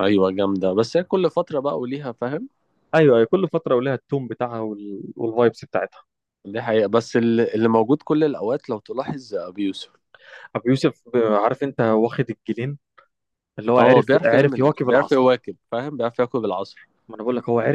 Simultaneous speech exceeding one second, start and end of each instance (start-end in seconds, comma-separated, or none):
13.8-15.4